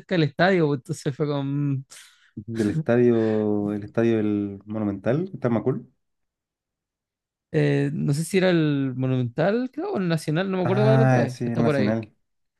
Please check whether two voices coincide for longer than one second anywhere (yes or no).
yes